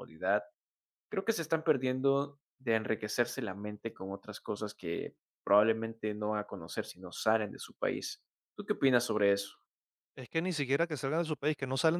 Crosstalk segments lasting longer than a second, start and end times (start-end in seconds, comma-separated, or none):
none